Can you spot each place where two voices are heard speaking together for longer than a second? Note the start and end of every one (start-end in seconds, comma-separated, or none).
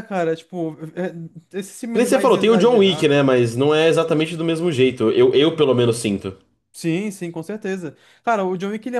1.9-3.3